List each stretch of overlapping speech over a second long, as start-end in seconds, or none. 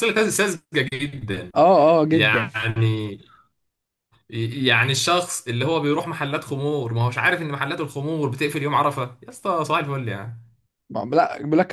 none